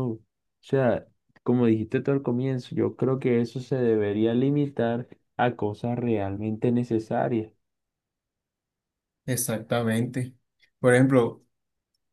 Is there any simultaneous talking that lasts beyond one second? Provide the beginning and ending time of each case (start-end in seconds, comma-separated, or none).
none